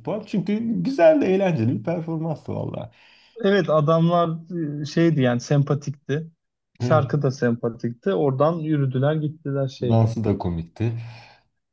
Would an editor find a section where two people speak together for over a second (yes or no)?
no